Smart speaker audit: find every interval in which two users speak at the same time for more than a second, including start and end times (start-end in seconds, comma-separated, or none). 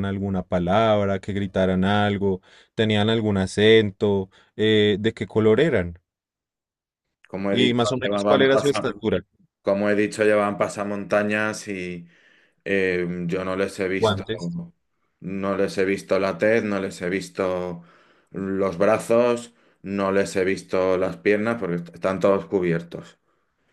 7.5-8.9